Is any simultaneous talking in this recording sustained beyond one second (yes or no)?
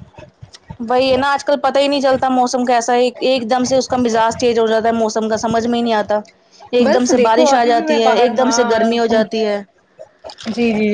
yes